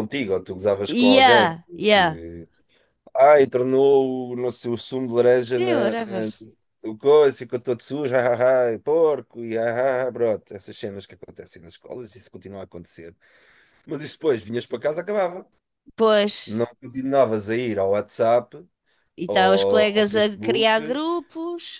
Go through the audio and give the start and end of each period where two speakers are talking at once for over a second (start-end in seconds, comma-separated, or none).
0.9-2.2, 19.3-21.0